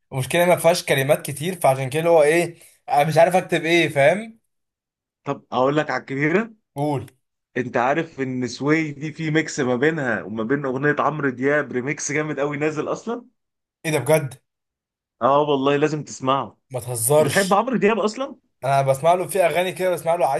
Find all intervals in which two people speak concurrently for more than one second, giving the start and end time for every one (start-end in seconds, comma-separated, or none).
none